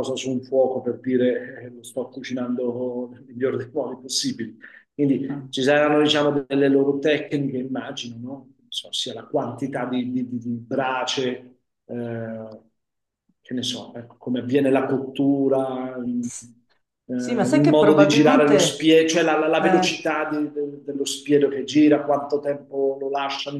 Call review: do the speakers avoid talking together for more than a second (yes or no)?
no